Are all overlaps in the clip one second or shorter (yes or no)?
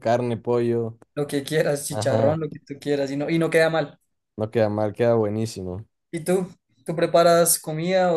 yes